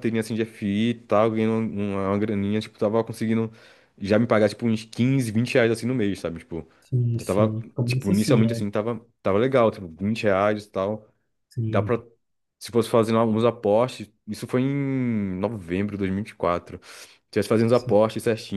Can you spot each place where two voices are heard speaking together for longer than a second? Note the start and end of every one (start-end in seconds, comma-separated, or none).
7.1-8.6